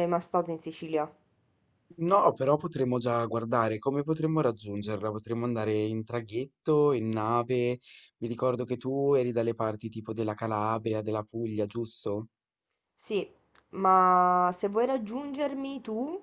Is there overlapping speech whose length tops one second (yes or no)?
no